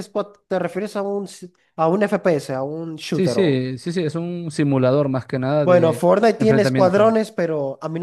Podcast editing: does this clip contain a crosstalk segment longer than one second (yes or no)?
yes